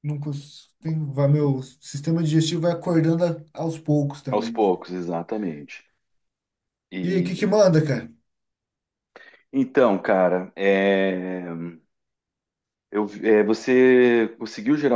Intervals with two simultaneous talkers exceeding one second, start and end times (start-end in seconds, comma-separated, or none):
none